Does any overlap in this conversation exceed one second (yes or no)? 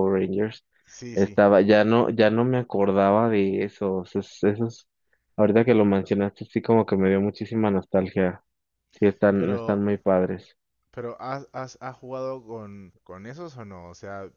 no